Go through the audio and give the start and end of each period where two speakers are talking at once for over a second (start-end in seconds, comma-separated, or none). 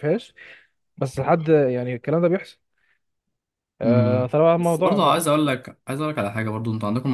3.8-5.2